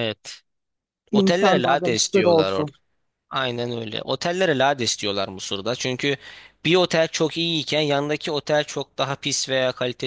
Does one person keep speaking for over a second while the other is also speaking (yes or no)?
yes